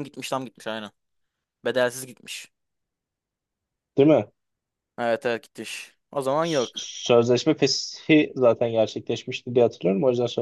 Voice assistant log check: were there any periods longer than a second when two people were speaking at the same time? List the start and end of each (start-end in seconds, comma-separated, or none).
none